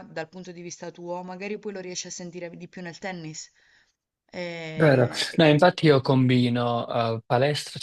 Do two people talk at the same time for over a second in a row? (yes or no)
no